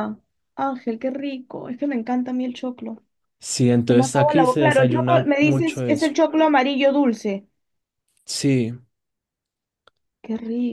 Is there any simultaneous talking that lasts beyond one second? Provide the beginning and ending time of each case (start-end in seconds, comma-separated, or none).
3.9-6.1